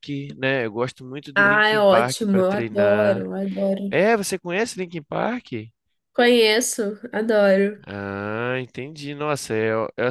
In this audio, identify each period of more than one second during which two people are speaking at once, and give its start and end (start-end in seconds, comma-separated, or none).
1.4-3.2